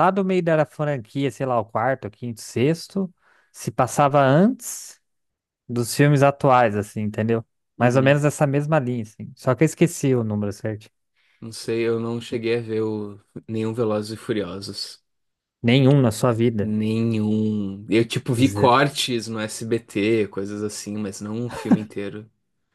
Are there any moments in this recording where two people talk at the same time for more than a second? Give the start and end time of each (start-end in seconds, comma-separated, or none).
none